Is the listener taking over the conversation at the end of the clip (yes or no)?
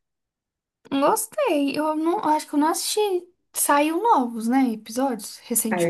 yes